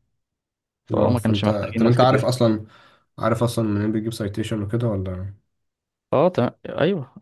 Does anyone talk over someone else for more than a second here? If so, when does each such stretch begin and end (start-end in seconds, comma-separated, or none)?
0.9-2.3